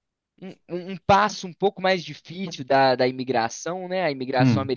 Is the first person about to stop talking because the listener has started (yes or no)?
no